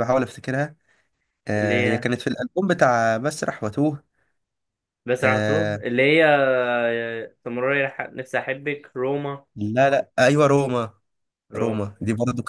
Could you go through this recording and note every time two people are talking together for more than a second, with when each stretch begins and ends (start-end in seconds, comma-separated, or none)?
none